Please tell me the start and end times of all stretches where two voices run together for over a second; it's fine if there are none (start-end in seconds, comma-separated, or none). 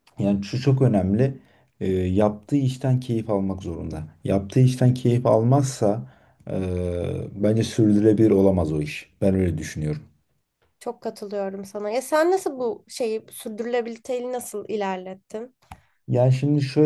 none